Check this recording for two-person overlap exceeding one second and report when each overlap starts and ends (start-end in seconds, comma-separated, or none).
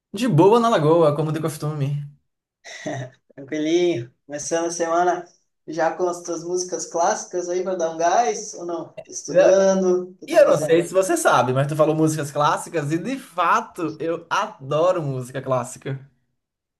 none